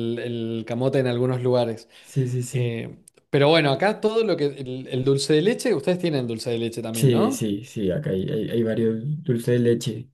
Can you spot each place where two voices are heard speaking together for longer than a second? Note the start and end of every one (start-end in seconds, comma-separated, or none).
none